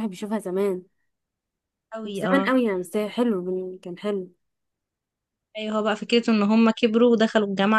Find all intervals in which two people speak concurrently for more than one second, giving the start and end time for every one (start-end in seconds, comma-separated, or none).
none